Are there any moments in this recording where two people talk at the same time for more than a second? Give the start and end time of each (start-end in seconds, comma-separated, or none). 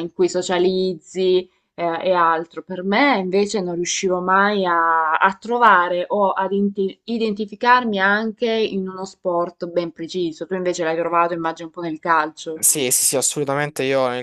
none